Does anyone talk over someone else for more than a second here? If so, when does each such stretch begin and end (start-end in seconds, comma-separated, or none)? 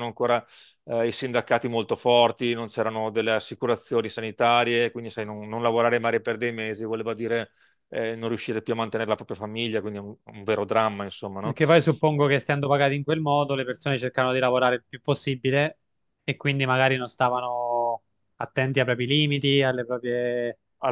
none